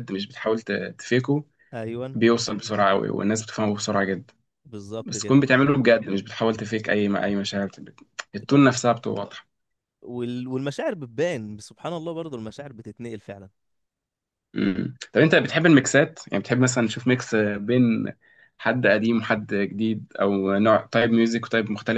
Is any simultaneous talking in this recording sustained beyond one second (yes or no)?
no